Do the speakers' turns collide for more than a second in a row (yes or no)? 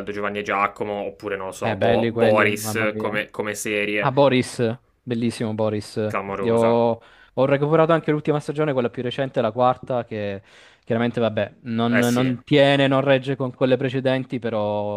yes